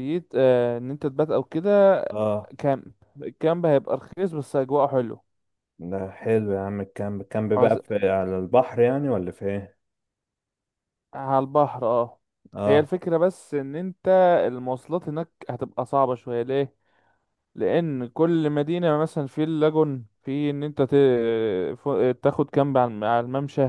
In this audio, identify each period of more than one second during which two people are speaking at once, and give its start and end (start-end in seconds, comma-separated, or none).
none